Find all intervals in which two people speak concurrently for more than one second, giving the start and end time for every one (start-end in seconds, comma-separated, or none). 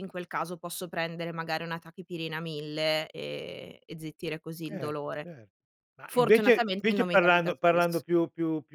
6.1-8.0